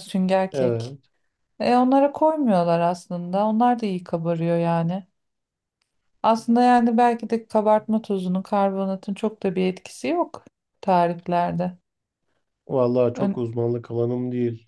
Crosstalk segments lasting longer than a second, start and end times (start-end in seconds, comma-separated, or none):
none